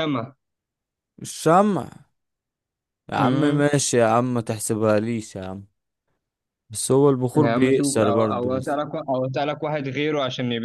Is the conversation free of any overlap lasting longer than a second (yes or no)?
no